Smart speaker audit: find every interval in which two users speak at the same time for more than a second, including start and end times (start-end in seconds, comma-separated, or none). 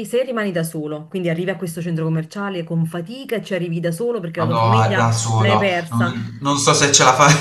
4.4-6.1